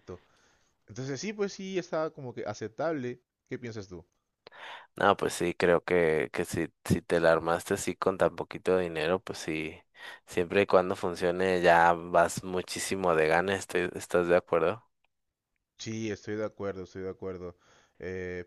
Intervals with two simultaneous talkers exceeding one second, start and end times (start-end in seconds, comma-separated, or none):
none